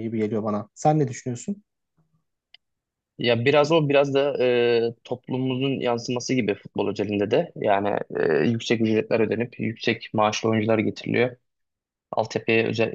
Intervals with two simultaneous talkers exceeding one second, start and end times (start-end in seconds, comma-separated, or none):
none